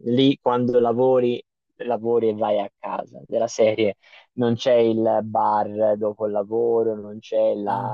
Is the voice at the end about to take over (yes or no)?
no